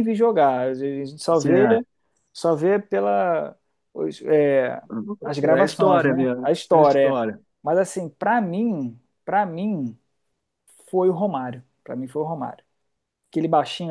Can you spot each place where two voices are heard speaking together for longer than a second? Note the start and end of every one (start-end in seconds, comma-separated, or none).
5.6-7.2